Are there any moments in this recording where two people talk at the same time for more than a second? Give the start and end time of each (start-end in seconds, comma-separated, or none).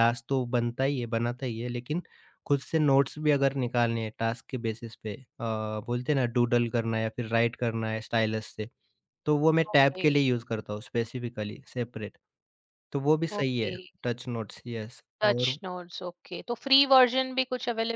none